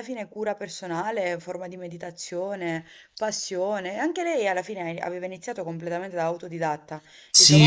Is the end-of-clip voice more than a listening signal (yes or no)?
yes